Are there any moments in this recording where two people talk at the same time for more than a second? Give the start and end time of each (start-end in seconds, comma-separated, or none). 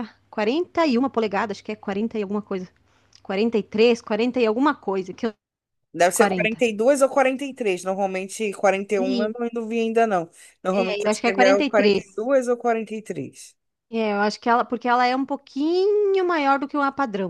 10.7-12.0